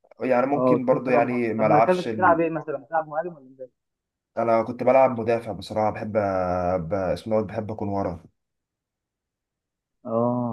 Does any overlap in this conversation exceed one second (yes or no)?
yes